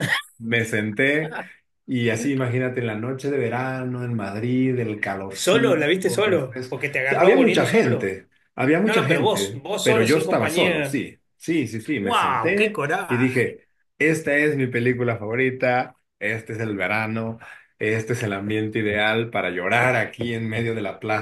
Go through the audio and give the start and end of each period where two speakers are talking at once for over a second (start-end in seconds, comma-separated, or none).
5.3-8.2, 8.8-11.1, 12.0-13.6